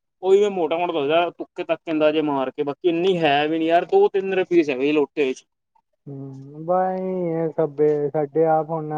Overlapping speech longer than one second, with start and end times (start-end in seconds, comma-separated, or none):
none